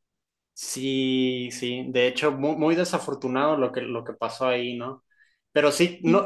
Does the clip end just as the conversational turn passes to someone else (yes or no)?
no